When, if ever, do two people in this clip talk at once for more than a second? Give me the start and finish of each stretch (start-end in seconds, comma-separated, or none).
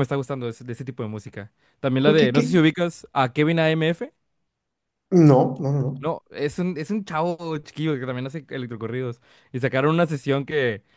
none